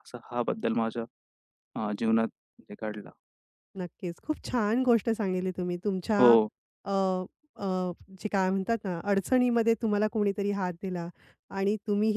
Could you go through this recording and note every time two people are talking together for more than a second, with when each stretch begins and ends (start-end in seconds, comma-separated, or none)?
none